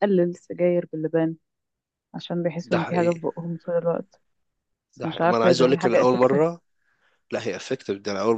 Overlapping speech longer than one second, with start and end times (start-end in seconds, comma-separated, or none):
5.0-6.4